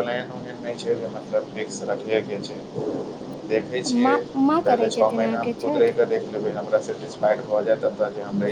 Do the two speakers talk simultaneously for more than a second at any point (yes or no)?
yes